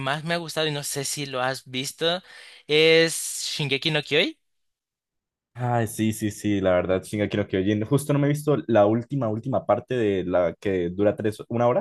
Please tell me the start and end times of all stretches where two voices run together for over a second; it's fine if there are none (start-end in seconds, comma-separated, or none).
none